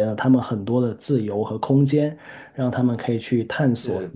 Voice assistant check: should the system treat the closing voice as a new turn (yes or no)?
no